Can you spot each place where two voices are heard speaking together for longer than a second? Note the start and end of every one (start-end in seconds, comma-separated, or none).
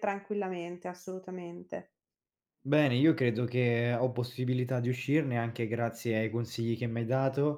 none